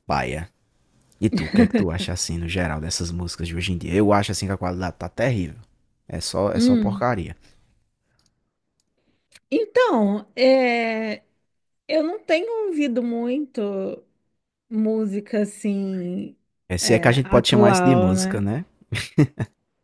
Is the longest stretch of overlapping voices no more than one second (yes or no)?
no